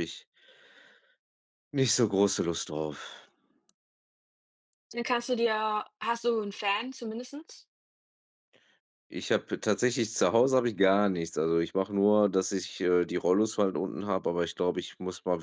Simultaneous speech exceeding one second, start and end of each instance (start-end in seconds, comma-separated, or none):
none